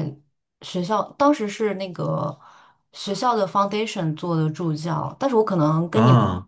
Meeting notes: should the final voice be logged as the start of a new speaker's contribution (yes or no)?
no